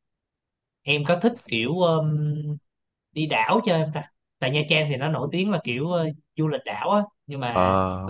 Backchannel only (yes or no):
yes